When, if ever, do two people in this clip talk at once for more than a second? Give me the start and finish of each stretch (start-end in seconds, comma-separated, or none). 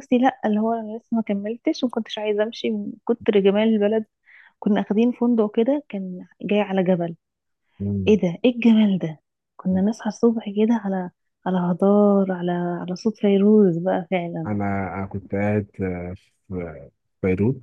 none